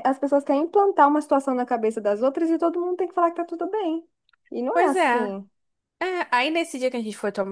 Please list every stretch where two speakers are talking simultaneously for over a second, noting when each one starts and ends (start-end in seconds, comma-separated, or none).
none